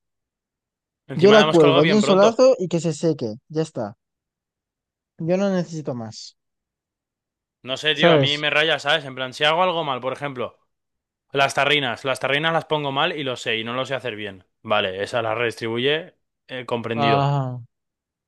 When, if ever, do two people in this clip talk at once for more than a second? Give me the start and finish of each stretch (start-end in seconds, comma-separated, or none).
1.1-2.5